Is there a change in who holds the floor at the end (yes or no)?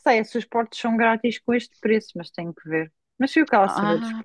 yes